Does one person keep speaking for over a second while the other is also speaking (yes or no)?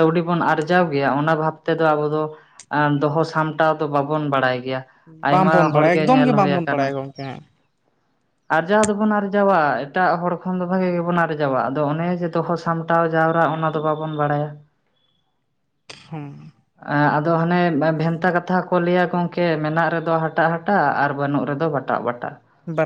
yes